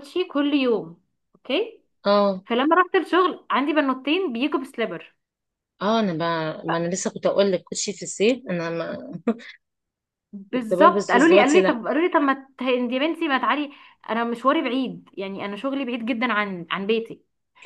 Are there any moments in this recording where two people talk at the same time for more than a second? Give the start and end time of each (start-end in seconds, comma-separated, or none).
10.5-11.8